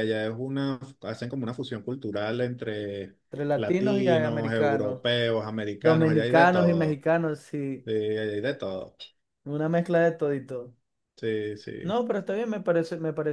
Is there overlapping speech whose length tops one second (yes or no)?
yes